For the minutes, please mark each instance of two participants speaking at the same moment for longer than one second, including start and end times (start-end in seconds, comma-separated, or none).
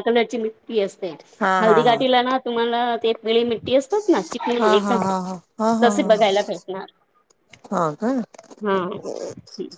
none